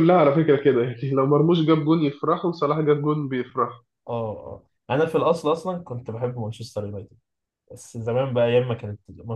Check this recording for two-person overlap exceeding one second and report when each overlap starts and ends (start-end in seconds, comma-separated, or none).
none